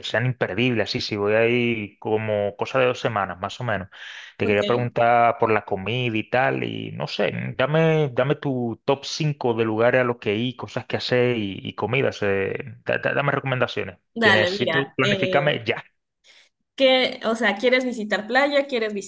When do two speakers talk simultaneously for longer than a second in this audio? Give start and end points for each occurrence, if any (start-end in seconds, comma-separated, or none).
14.2-15.5